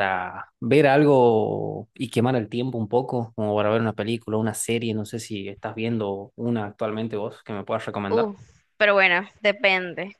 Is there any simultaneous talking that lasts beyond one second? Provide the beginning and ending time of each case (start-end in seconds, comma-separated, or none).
none